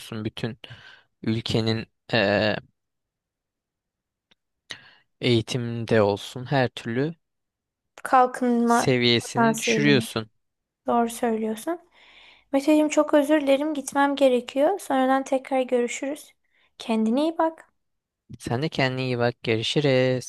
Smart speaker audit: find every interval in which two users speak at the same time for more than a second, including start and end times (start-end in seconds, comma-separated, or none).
8.7-10.1